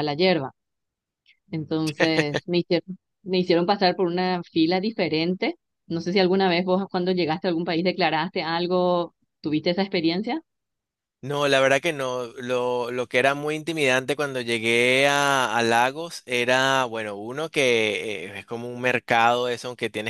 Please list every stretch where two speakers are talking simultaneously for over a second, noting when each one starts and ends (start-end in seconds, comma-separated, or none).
none